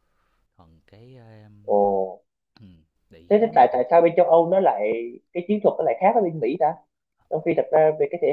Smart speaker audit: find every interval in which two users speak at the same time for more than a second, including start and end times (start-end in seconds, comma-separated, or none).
none